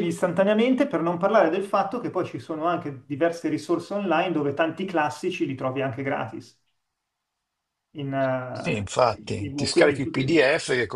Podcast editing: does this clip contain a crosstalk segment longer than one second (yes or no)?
yes